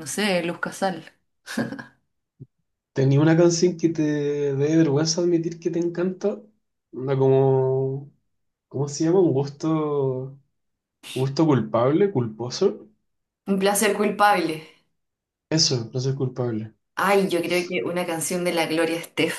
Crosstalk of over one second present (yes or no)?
no